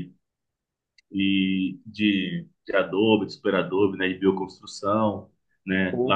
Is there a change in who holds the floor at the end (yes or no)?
no